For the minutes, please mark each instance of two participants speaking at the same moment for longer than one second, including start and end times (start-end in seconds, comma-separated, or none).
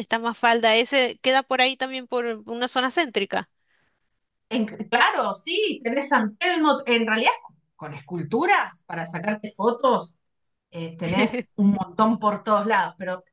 none